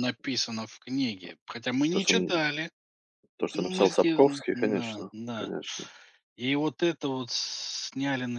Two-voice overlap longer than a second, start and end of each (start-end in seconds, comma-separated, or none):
3.5-5.5